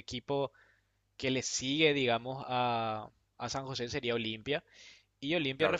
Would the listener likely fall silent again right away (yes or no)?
yes